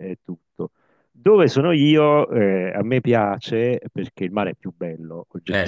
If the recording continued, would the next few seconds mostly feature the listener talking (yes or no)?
no